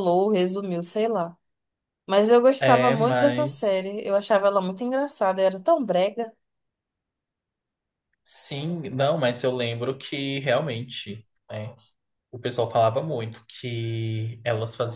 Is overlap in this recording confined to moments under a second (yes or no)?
no